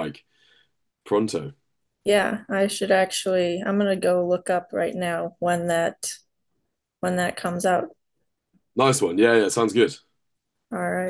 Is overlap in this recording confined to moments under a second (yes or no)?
yes